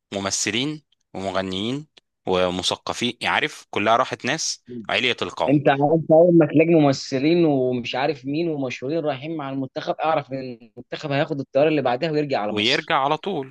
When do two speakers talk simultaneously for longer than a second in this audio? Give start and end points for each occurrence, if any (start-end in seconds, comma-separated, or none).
none